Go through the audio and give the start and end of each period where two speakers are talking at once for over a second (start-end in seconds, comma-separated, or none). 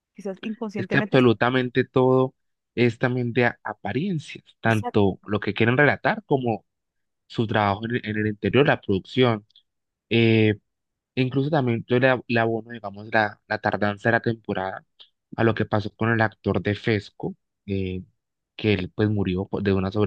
none